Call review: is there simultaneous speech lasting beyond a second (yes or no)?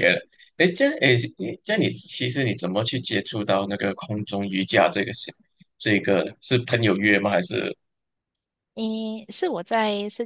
no